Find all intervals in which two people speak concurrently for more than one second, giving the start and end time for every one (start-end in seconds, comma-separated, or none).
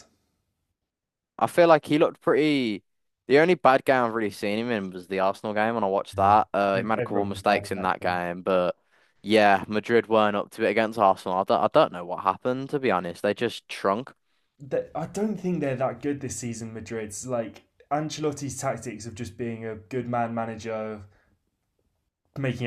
7.0-8.2